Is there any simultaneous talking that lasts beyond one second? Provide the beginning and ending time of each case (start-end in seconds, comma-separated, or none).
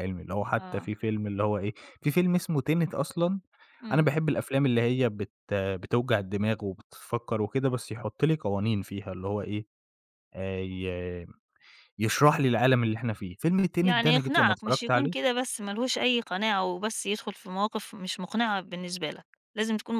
13.8-15.3